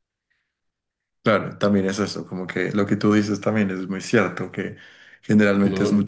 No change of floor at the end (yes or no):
yes